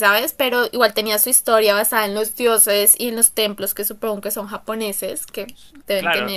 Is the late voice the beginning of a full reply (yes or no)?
yes